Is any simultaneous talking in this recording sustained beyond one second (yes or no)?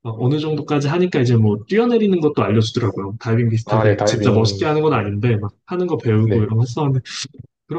yes